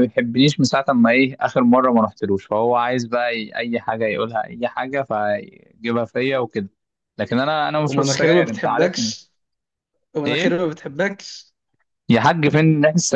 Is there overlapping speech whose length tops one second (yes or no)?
yes